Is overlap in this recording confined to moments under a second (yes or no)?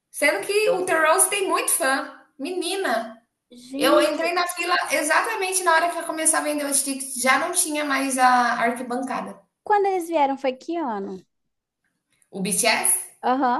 yes